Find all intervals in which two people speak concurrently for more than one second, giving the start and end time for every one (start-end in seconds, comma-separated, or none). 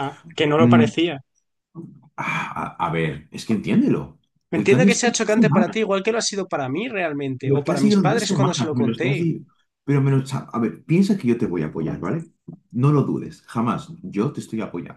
4.6-5.8, 7.4-9.3